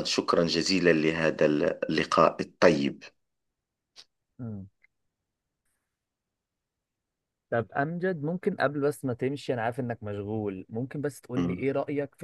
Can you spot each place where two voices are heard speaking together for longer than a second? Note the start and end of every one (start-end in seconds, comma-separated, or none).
none